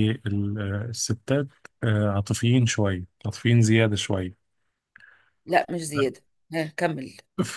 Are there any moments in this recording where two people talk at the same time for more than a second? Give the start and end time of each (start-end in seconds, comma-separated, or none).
none